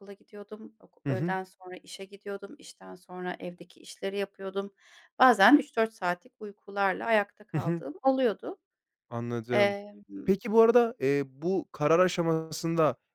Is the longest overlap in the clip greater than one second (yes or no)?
no